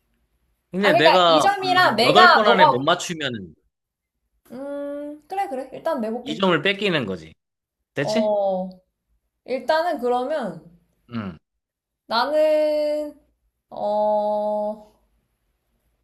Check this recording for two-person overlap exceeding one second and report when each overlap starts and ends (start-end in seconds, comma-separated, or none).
0.8-2.9